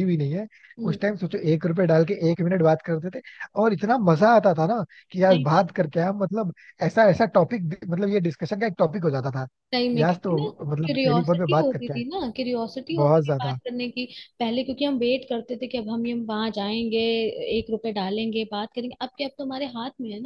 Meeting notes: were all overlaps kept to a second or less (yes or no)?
no